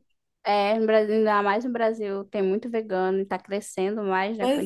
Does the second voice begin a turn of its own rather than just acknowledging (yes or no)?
yes